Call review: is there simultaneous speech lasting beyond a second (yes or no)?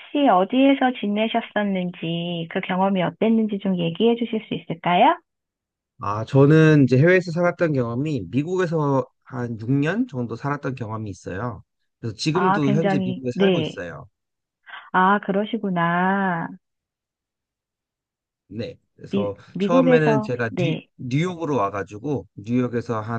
yes